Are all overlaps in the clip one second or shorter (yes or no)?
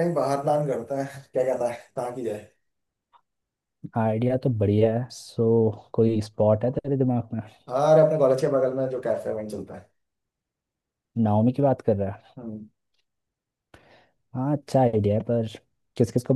yes